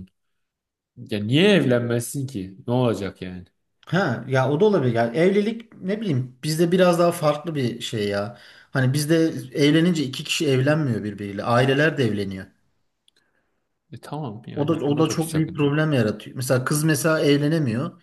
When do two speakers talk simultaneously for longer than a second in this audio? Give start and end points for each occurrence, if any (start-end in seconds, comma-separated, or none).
14.6-15.8